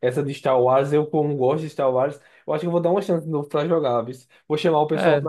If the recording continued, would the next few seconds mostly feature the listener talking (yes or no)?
no